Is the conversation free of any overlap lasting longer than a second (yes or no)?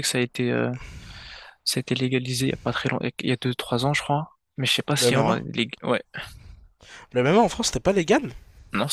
yes